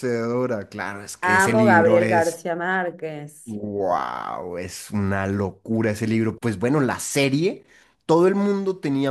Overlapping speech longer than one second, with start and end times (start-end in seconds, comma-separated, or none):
1.2-2.4